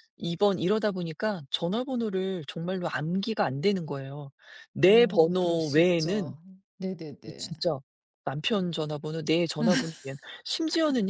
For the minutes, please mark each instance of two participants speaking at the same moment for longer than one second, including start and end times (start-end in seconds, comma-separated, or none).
4.8-6.4